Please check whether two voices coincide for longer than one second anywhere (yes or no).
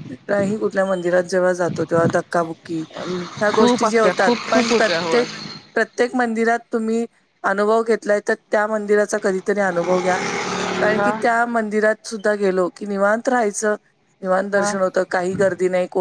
yes